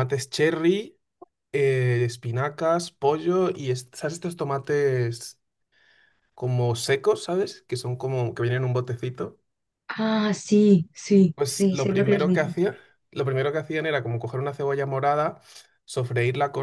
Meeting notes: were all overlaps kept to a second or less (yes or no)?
no